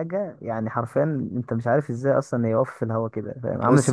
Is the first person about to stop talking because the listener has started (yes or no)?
yes